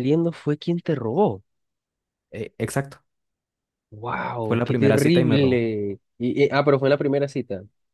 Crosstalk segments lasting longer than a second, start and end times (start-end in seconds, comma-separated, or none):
4.4-5.6